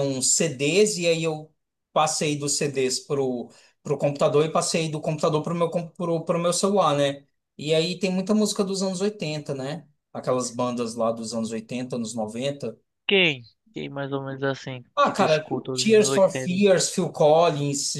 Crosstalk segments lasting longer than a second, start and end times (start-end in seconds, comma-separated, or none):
15.0-16.6